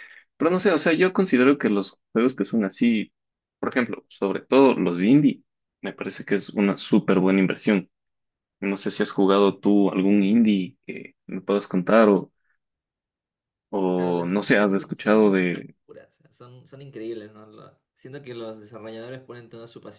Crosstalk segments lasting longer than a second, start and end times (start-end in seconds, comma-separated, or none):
13.9-15.4